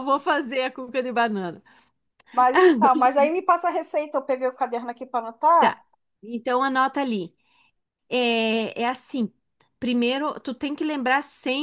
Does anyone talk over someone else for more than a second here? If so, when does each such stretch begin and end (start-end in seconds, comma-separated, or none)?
none